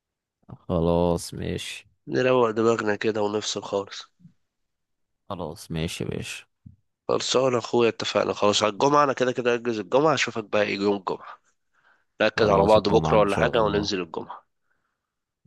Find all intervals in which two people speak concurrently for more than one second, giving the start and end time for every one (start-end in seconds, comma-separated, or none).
12.3-13.9